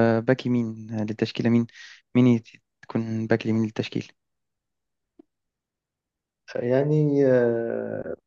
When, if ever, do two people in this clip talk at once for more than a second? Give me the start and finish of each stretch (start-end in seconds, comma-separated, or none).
none